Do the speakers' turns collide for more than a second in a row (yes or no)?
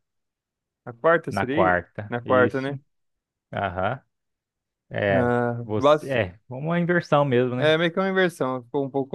yes